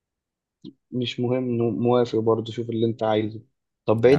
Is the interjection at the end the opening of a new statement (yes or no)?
no